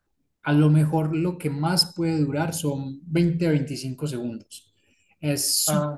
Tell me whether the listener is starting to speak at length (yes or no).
no